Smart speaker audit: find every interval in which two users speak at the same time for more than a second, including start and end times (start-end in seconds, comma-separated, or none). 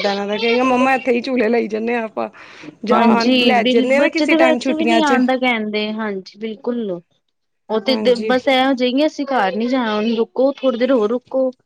2.9-5.2